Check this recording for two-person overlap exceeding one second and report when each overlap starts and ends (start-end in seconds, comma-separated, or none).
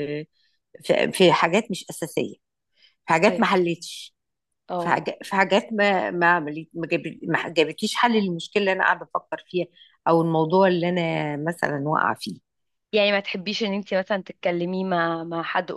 none